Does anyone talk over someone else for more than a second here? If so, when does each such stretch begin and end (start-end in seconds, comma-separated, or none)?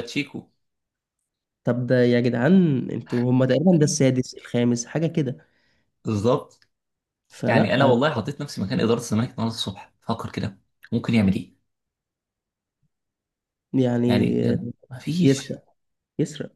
none